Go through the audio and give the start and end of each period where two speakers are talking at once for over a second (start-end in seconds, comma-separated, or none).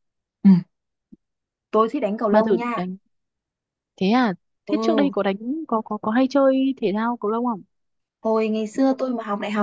none